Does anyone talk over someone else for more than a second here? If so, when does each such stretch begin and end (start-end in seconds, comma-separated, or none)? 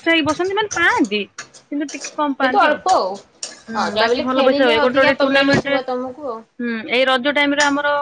3.7-5.8